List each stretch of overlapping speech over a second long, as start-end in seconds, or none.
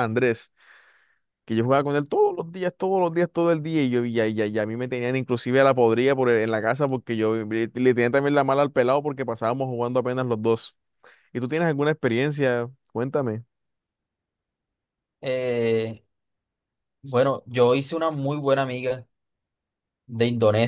none